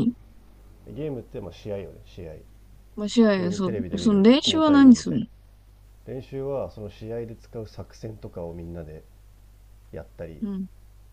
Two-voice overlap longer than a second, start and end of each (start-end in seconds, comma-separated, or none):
3.4-5.2